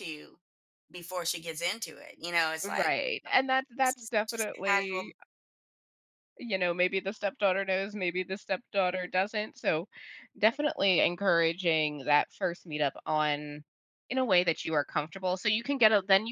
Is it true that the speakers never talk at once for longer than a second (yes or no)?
no